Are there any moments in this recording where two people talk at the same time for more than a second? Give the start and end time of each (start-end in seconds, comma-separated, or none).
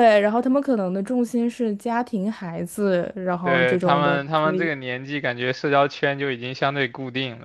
3.4-4.7